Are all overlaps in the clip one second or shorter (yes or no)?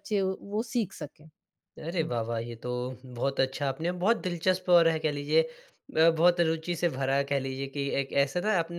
yes